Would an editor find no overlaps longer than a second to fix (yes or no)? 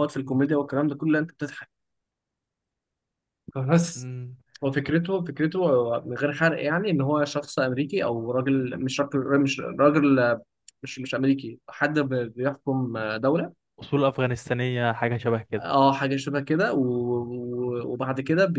yes